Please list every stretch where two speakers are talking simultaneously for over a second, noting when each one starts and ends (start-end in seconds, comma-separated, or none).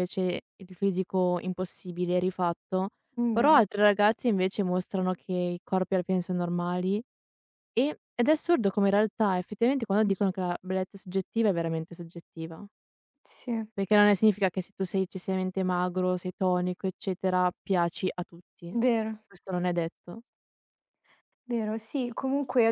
none